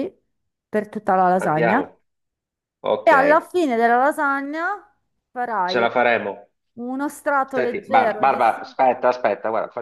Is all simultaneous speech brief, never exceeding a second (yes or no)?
no